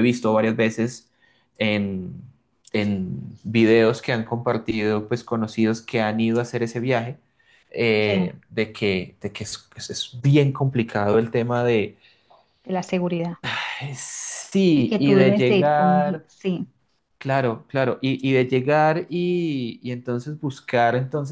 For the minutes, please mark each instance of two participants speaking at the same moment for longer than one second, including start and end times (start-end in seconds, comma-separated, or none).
14.7-16.3